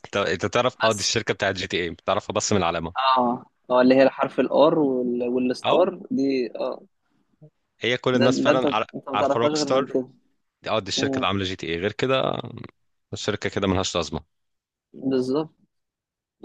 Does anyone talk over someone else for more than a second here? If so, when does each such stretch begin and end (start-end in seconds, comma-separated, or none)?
8.2-9.9